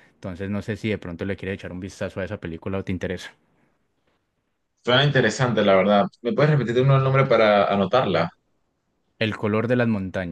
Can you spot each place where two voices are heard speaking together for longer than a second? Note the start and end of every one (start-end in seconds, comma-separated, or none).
none